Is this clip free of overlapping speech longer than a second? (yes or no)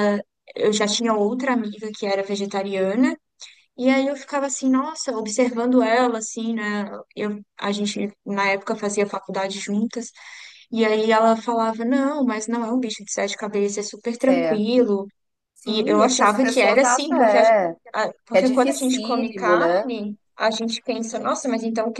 no